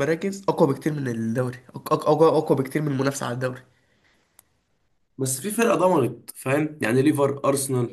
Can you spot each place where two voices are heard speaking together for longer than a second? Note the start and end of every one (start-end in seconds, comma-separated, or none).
none